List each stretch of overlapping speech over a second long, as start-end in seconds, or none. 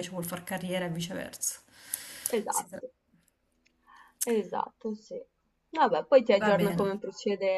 none